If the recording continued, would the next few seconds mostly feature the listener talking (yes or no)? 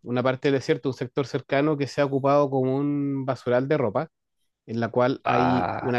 no